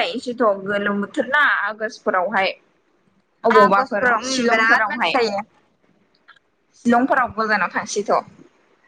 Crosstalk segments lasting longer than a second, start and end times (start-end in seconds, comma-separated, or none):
3.6-5.1